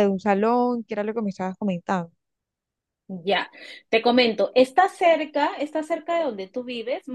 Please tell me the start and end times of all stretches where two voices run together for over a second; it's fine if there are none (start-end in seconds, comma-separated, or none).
none